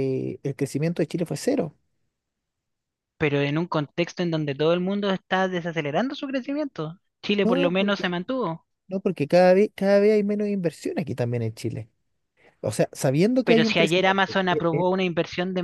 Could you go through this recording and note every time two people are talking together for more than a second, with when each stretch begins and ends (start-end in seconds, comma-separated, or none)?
13.4-14.8